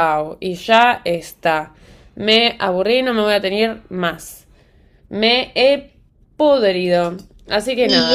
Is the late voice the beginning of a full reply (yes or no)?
yes